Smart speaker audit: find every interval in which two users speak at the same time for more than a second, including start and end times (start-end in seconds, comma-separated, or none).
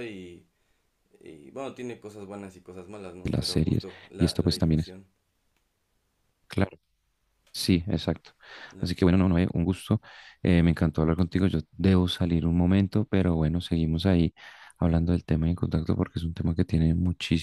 3.2-4.9